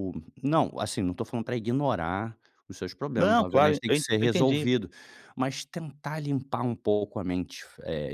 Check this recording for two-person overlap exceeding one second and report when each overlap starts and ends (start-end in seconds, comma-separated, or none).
3.2-4.7